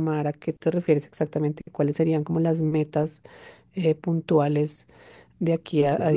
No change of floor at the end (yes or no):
no